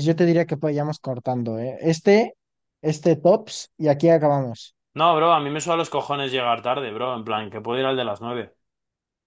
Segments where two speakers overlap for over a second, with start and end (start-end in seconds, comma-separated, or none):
none